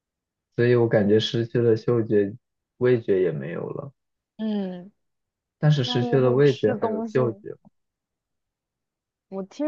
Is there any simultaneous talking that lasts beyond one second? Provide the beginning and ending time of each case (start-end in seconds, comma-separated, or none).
5.8-7.2